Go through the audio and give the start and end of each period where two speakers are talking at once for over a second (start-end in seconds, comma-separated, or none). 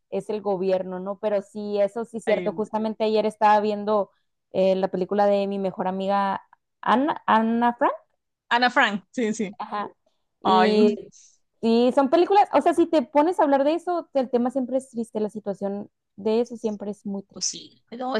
none